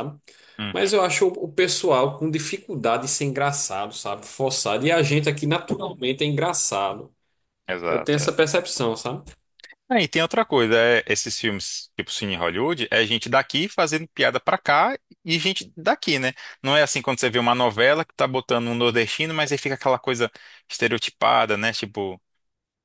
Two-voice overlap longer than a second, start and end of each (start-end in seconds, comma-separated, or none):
none